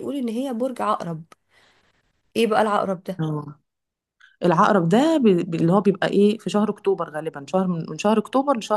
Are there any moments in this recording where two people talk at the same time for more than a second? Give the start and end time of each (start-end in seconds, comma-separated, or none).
none